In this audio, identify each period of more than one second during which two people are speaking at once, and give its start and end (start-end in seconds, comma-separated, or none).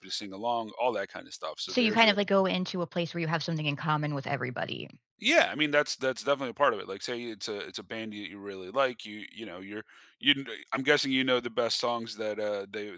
none